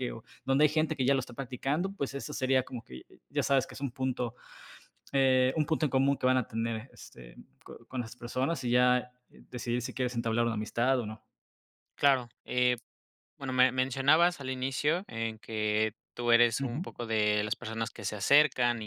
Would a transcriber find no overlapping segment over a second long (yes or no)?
yes